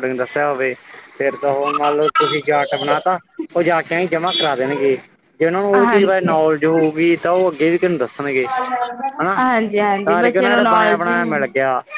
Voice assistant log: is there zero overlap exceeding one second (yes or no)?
no